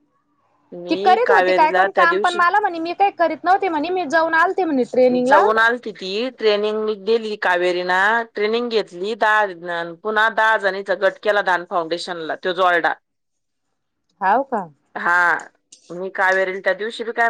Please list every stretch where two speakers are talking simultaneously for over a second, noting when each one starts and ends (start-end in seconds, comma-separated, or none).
0.9-2.4